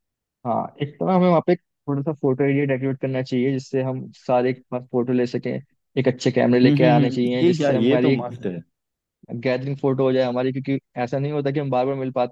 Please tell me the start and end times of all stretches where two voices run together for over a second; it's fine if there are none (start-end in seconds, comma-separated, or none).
6.6-8.3